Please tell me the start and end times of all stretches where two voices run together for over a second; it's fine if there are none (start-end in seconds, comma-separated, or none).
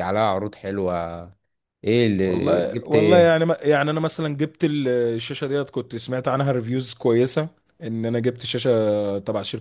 2.2-3.4